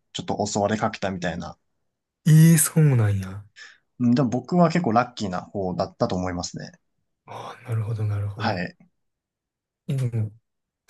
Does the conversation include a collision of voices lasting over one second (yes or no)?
no